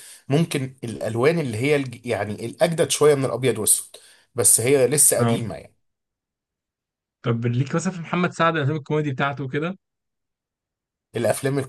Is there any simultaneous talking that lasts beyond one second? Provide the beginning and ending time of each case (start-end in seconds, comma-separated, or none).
none